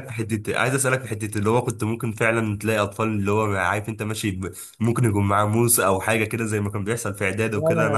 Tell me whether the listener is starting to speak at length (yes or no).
yes